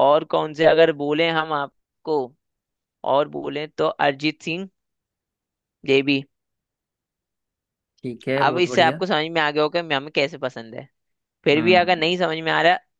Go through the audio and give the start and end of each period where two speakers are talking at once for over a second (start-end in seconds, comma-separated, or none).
none